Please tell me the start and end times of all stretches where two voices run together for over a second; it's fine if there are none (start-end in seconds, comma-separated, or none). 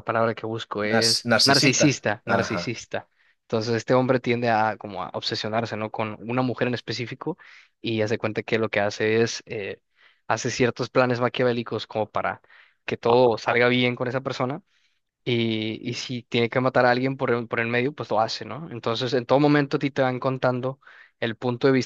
0.8-2.7